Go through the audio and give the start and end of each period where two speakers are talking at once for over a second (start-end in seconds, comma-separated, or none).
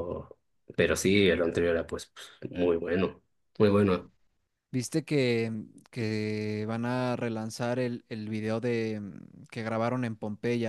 none